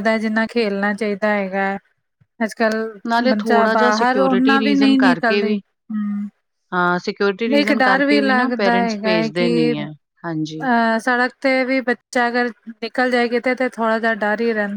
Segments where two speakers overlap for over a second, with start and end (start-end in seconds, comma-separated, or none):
3.3-5.6, 7.5-9.7